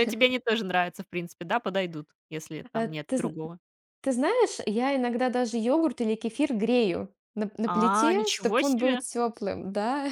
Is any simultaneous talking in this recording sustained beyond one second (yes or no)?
yes